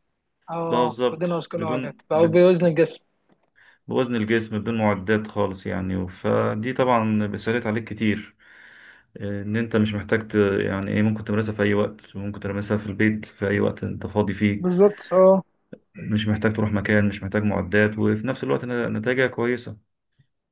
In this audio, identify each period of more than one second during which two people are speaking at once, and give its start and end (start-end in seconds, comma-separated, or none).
0.7-2.5